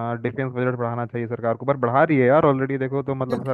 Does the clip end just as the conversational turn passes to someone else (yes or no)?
no